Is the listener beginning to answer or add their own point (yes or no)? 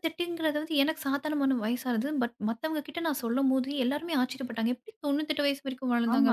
yes